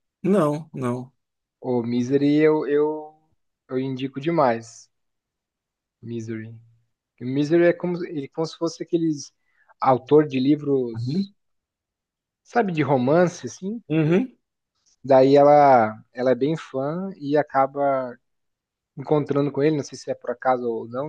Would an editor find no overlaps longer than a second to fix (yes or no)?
yes